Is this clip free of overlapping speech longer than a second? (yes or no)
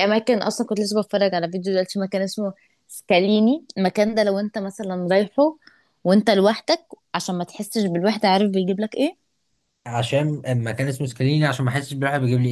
yes